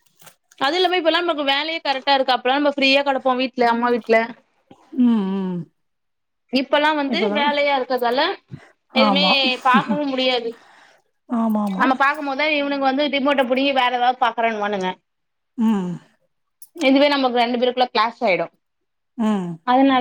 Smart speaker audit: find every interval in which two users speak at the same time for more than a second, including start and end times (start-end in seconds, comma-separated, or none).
none